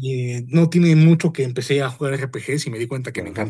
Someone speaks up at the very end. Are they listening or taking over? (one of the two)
taking over